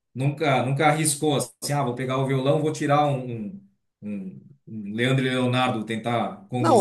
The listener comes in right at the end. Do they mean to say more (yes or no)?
yes